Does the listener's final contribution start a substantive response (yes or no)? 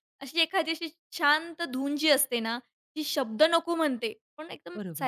no